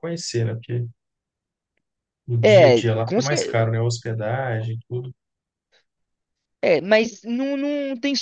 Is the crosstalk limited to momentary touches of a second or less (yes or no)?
no